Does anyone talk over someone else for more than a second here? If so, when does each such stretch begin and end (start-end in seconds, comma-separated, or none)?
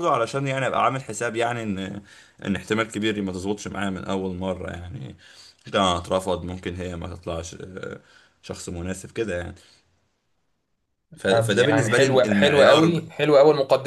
11.2-13.0